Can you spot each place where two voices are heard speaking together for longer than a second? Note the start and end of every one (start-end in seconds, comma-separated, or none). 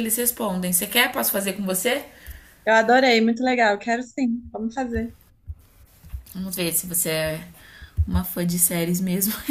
none